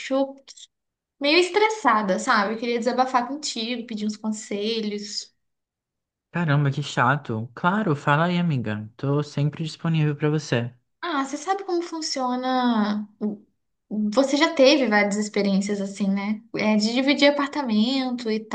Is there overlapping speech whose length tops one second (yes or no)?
no